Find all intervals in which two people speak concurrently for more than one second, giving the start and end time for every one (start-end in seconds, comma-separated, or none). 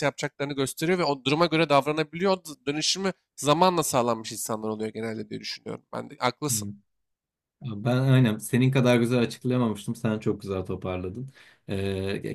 none